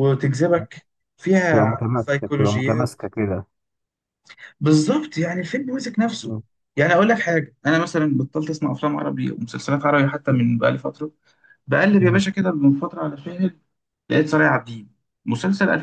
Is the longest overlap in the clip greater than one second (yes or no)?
yes